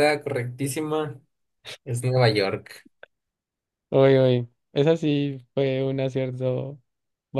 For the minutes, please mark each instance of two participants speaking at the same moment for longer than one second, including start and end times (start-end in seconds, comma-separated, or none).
none